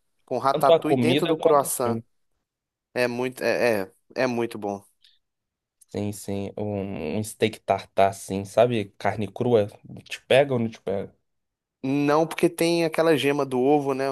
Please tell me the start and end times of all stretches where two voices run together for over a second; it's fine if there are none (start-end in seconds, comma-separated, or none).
0.5-2.0